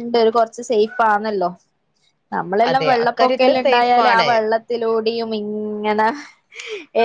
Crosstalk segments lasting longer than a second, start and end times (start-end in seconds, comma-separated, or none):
2.7-4.3